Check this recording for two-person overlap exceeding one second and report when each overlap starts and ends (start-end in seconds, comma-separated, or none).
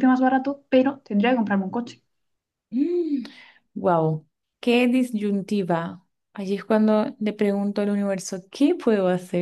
none